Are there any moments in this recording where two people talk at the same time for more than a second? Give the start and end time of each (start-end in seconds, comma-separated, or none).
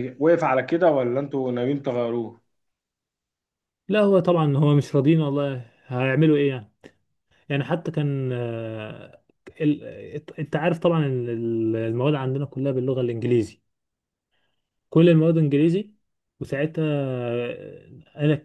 none